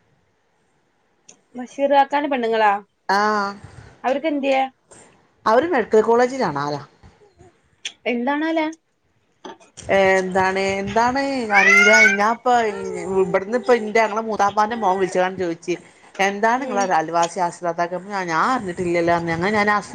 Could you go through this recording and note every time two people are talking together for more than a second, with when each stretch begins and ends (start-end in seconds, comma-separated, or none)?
none